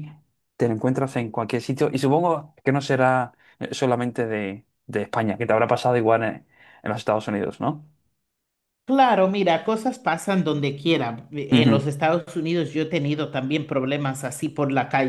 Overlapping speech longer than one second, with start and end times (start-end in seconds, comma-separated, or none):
none